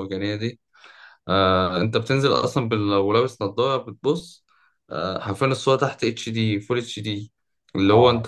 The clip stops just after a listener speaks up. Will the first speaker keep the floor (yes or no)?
yes